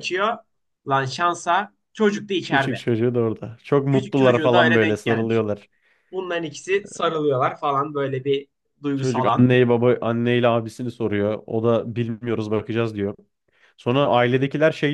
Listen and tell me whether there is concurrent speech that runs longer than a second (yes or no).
yes